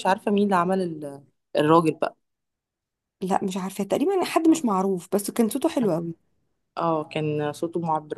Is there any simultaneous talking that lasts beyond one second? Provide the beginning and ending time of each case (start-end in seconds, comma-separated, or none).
none